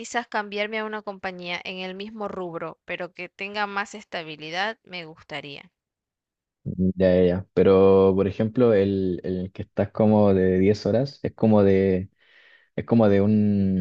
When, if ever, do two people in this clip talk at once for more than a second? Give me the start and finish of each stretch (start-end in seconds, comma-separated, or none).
none